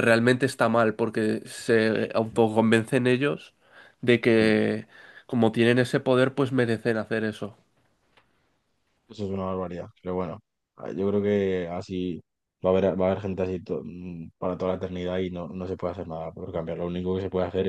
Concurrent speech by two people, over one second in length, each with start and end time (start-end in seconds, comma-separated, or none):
none